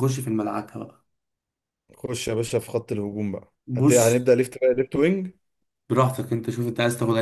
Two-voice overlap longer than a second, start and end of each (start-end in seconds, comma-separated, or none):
none